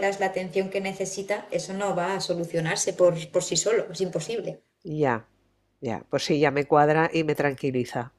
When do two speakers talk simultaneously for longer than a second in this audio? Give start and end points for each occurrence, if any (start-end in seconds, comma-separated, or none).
none